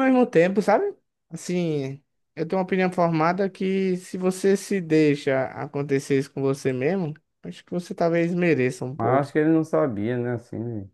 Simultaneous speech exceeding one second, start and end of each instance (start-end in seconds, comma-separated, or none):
none